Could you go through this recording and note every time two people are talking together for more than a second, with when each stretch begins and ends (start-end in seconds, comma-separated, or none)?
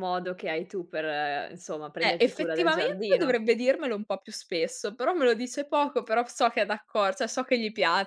2.0-3.4